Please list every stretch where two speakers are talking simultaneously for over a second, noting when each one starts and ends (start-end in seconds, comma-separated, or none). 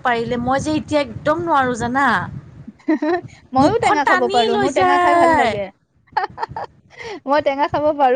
3.6-5.5